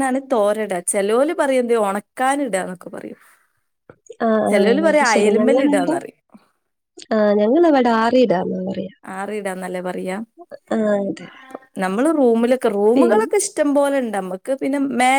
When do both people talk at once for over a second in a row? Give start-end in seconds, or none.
4.5-6.0